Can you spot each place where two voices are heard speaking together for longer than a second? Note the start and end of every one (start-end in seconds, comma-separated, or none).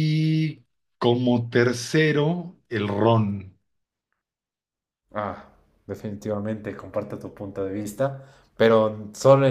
none